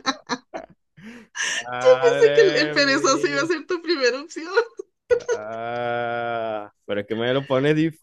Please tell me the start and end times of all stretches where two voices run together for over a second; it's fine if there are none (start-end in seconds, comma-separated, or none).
2.0-3.5